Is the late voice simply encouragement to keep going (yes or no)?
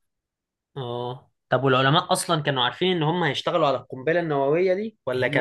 yes